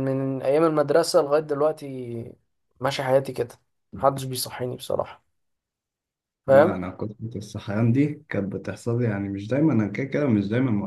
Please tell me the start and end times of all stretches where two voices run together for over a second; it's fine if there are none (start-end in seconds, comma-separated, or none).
none